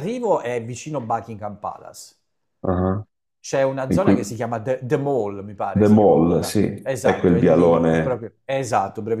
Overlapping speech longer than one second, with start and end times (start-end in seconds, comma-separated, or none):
5.7-8.2